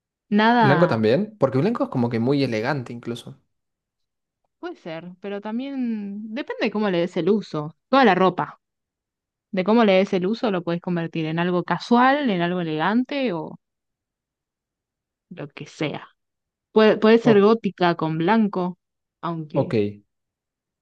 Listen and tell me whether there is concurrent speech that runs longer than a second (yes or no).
no